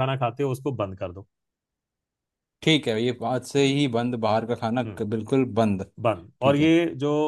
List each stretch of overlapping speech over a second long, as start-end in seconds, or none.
none